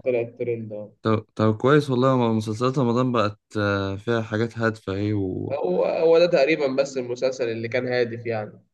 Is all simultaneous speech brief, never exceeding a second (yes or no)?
yes